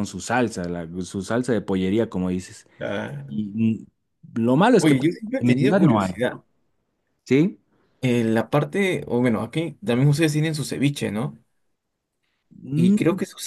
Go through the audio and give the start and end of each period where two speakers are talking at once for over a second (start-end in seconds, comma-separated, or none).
4.8-6.1